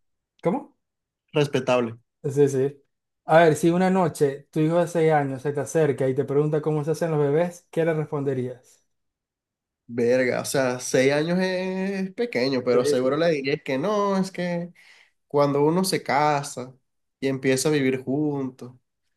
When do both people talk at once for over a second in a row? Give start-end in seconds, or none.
none